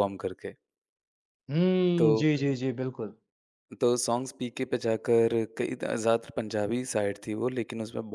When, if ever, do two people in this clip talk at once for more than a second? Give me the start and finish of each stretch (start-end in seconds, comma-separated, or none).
none